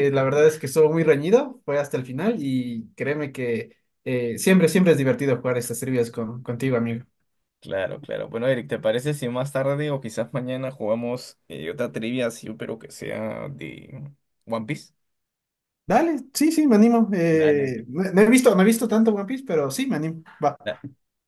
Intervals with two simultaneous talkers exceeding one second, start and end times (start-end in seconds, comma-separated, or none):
none